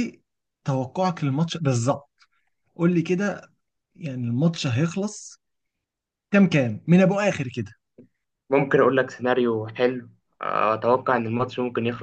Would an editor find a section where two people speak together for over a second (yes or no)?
no